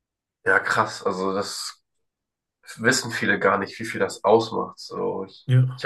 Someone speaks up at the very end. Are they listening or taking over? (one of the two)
listening